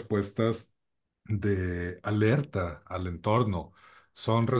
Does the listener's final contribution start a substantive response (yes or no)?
no